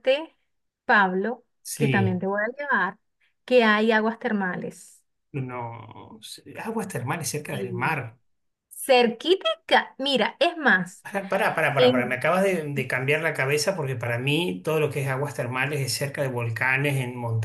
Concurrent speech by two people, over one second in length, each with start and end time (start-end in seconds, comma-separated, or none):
none